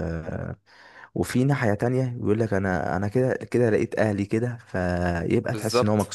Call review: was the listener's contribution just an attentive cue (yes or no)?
no